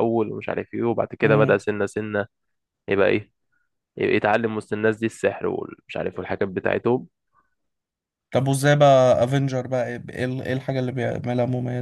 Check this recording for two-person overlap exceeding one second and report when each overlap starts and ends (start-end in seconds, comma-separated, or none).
none